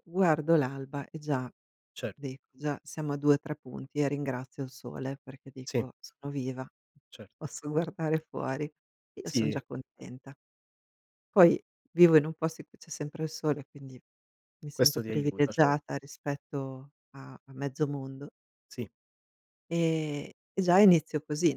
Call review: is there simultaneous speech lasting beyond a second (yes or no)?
yes